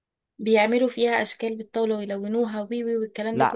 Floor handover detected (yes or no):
yes